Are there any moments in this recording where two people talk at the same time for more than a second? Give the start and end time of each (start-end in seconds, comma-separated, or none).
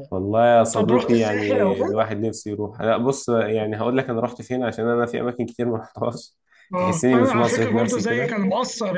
0.7-2.1, 6.8-8.4